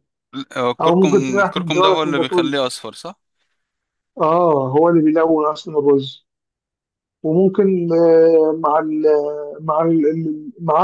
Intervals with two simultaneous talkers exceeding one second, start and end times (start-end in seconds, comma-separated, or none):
0.8-2.5